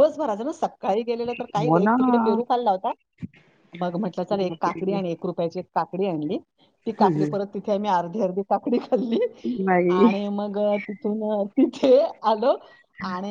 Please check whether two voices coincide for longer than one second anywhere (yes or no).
no